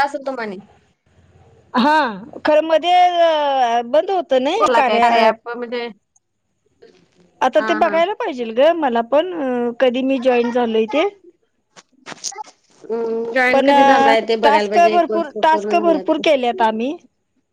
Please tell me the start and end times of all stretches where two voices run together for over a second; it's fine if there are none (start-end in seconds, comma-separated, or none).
13.5-15.8